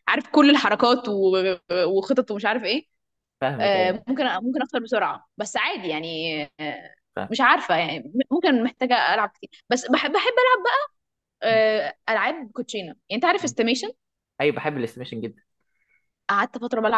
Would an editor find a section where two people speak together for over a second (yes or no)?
no